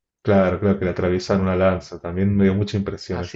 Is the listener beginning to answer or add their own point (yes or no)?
no